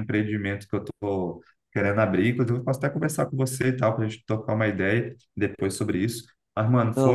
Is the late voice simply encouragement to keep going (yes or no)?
yes